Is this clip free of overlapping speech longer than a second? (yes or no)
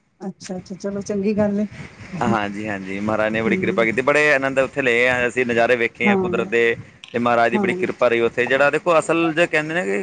yes